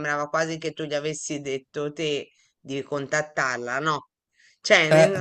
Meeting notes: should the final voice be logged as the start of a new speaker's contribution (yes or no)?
no